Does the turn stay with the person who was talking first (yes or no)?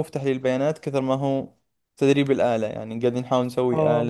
no